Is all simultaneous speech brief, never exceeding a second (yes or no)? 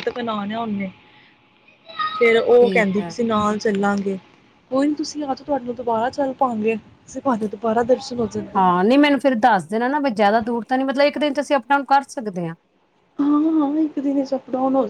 yes